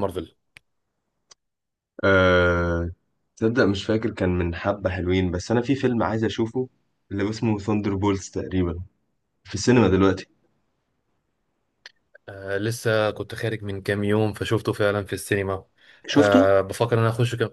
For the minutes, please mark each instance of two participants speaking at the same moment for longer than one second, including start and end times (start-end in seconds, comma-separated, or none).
none